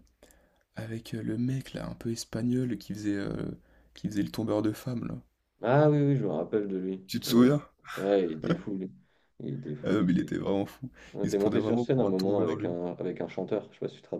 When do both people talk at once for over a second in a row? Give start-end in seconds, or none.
11.1-12.8